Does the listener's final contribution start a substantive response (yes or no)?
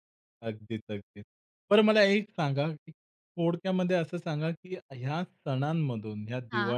no